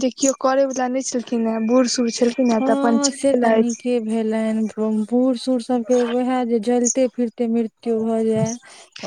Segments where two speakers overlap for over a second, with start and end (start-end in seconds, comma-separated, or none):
none